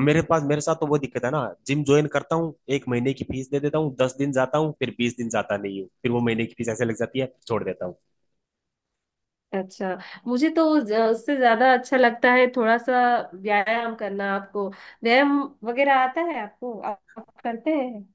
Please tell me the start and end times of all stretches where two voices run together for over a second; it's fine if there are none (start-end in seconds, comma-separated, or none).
none